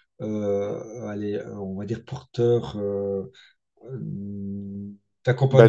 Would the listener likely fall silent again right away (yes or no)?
yes